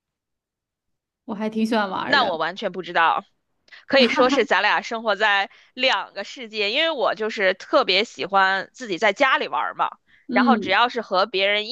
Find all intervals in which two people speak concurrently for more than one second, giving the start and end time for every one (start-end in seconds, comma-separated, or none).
none